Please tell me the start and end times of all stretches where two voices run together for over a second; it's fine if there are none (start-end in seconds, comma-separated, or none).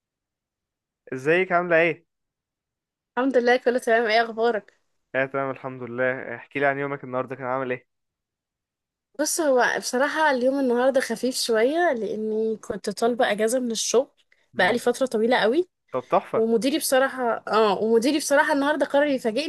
none